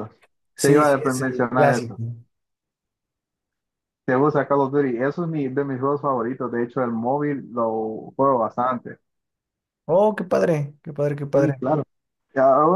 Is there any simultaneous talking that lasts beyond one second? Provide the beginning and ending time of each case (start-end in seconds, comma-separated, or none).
0.6-1.9